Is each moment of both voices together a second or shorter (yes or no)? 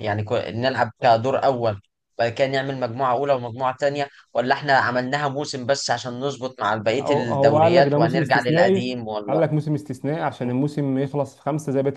no